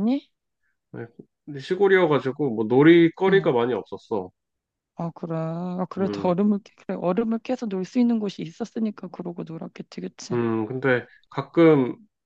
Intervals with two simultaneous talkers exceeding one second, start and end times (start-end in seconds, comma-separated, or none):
none